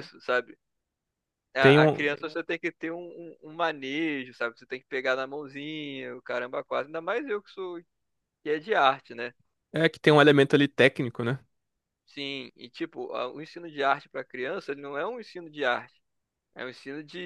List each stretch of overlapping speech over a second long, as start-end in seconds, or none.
none